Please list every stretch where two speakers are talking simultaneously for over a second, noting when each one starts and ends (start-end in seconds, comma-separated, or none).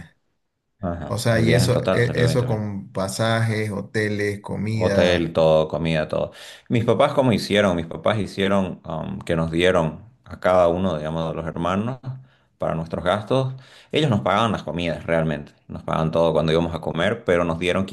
1.1-2.6